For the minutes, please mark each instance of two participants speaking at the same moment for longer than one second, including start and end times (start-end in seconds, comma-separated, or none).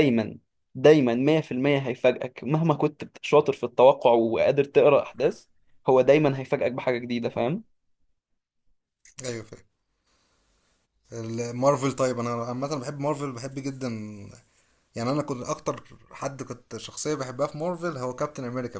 none